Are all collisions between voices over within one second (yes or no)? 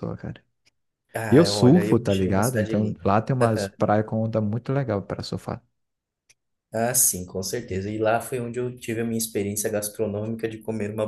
no